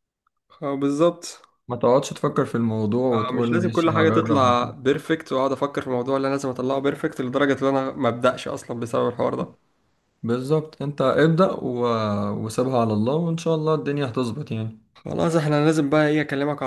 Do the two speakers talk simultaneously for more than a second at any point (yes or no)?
yes